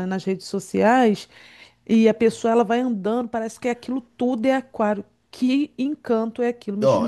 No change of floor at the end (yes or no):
no